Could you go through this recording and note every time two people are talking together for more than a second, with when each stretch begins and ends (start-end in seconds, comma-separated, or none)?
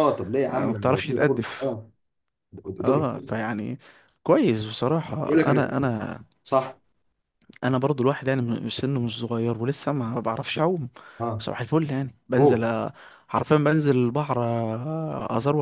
0.5-1.8